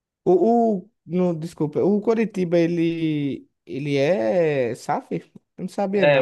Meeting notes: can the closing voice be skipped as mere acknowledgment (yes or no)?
no